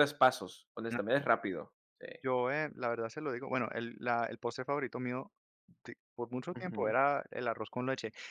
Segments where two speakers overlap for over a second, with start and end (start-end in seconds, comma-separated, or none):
none